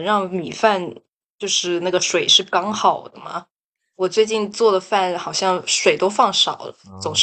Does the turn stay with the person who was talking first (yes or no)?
no